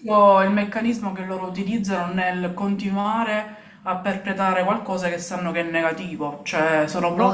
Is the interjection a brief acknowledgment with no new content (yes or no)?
no